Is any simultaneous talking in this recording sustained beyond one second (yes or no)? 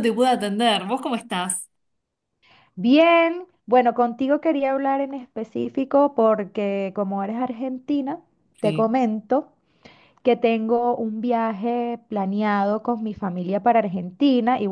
no